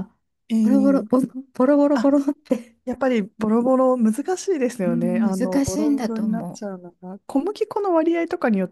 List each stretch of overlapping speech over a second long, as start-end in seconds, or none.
4.8-6.6